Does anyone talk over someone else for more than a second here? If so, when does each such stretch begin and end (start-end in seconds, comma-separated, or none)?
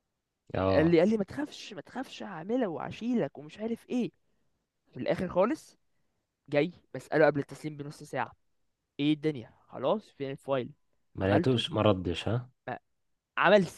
none